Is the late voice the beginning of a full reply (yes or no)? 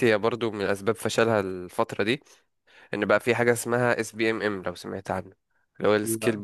no